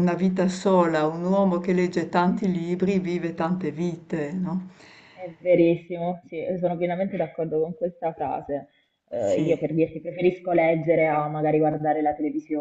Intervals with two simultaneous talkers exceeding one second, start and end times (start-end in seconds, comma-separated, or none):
none